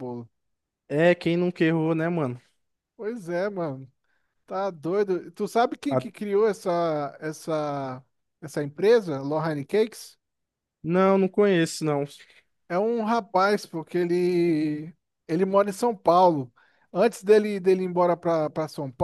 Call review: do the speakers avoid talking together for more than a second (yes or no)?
yes